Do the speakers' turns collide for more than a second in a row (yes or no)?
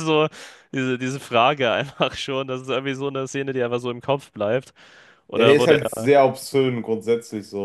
no